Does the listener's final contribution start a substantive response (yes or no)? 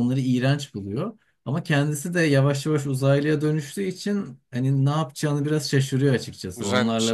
no